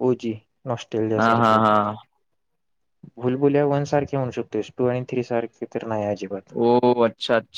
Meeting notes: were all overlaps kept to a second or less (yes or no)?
yes